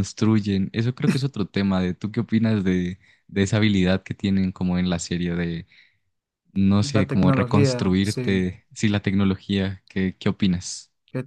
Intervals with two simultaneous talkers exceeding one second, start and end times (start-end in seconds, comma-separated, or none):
6.9-8.5